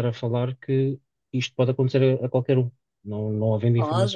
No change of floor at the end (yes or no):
no